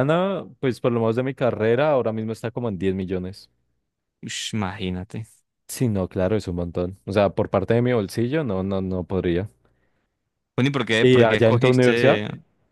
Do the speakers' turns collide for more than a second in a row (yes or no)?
yes